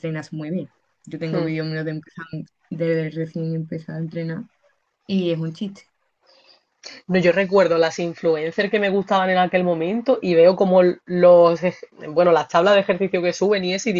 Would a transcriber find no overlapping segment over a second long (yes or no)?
yes